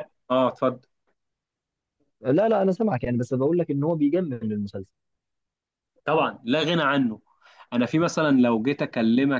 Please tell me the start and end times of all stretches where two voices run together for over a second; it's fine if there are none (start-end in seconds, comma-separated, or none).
none